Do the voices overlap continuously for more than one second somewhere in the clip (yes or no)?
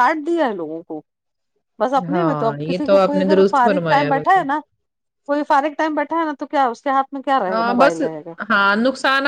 yes